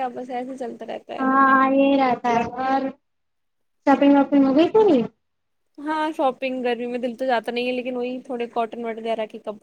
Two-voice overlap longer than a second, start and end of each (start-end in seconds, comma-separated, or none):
none